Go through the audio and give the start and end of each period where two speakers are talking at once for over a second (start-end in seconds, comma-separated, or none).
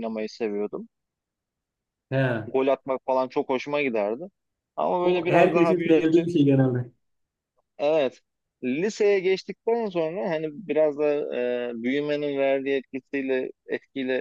5.0-6.2